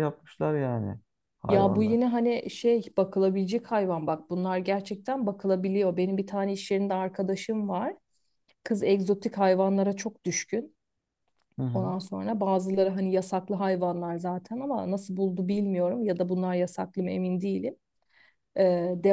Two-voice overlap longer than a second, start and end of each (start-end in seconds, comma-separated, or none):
none